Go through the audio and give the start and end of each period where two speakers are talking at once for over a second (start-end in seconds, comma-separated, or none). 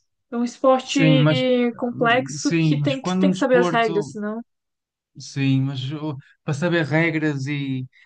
1.9-4.1